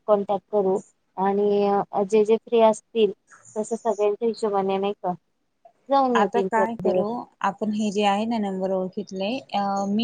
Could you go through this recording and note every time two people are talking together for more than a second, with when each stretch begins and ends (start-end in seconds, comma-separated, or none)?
none